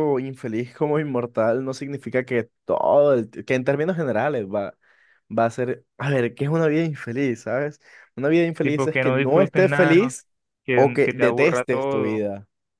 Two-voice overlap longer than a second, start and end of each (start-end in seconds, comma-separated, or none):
8.6-10.1, 10.8-12.2